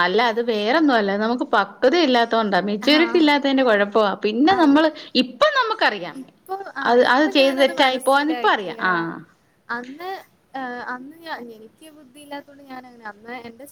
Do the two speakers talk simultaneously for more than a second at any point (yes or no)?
yes